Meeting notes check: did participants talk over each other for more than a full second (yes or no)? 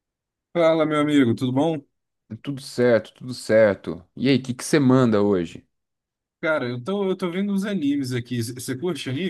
no